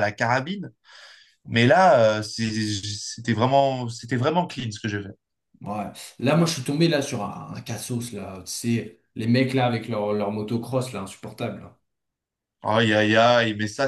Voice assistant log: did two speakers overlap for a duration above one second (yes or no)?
no